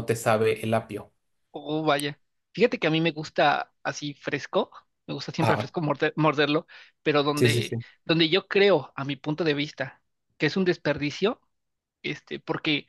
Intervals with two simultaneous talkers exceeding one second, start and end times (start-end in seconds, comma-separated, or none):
none